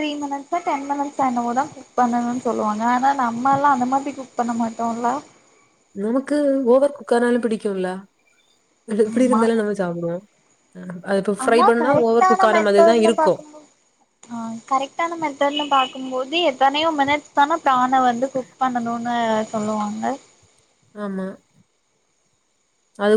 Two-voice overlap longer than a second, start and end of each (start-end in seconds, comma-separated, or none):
11.4-13.3